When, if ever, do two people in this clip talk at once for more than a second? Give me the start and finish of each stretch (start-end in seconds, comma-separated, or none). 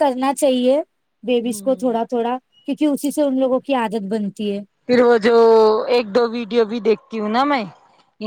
none